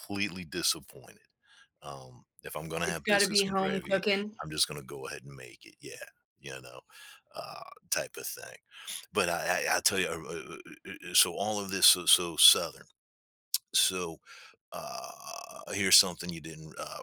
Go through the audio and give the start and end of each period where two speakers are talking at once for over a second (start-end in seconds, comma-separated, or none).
2.8-4.0